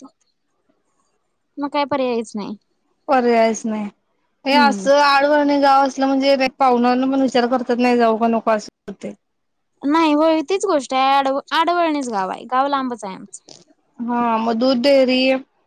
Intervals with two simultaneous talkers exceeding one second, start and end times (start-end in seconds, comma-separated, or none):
none